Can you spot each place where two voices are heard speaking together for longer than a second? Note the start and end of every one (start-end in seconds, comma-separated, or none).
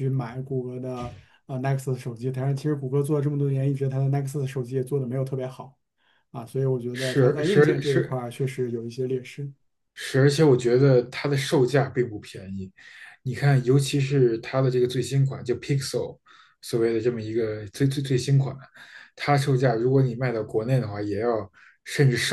6.9-8.2